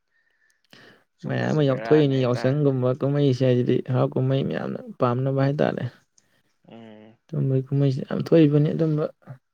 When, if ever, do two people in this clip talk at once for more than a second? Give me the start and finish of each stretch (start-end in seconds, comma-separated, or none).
1.3-2.6